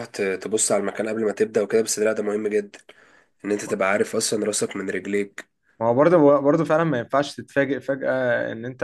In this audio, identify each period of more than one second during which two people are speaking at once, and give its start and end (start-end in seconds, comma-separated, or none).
none